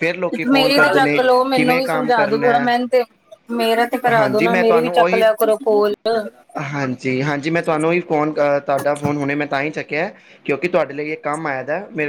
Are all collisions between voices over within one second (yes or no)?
yes